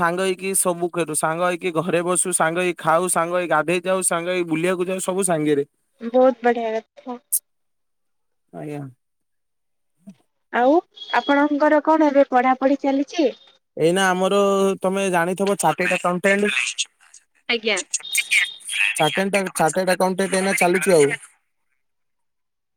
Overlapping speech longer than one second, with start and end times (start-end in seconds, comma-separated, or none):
none